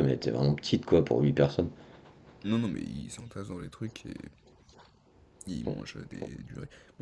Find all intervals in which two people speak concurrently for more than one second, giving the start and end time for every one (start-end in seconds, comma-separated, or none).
none